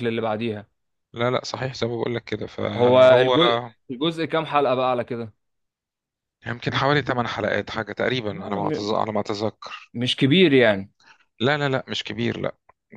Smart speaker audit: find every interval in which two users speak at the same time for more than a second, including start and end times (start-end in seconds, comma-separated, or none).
none